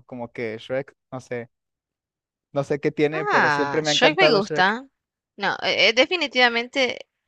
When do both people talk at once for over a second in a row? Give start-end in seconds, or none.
3.1-4.7